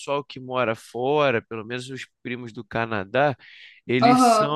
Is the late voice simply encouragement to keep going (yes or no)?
yes